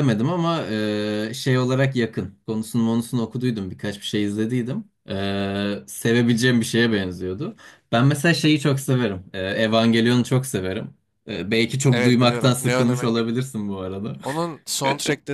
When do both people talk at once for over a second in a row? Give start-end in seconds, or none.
11.9-13.2